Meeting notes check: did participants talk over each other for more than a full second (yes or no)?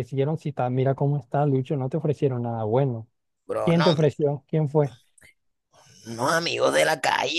no